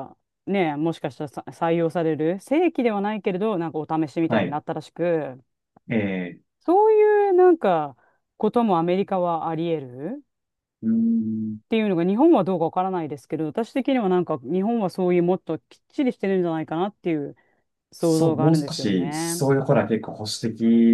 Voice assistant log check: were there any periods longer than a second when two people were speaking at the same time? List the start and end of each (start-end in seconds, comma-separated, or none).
18.0-19.4